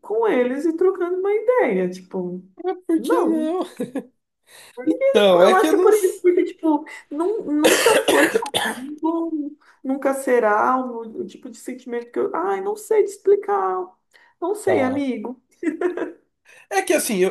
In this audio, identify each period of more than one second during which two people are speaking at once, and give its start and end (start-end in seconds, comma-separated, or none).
none